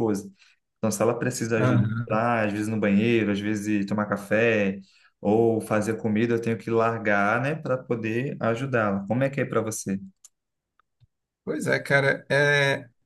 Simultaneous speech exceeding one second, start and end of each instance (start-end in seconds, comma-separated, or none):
none